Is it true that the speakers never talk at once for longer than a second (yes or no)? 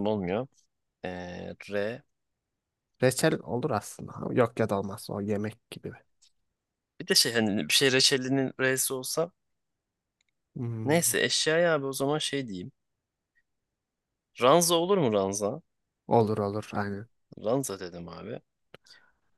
yes